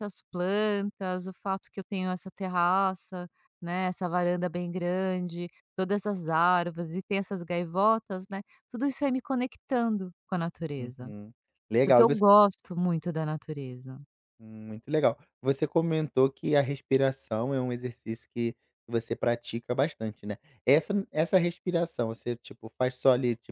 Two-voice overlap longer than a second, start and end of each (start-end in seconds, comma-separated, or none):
none